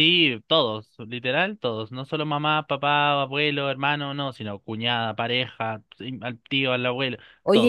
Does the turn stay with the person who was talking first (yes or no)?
no